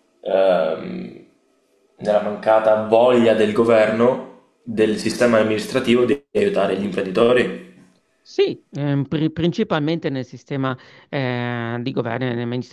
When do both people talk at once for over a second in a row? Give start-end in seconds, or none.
none